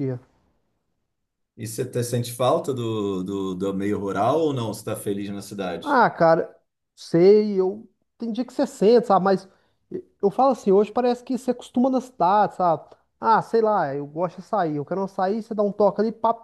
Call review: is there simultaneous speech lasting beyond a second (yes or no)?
no